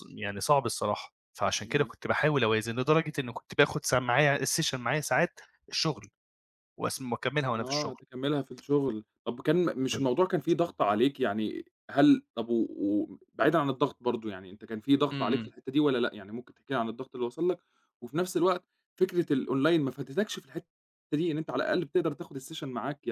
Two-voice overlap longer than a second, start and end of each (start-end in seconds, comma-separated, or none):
none